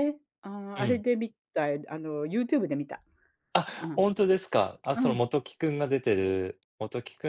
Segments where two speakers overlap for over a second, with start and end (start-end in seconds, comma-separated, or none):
none